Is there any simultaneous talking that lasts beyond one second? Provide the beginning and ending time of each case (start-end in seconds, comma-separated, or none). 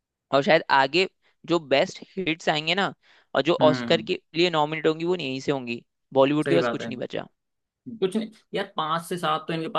none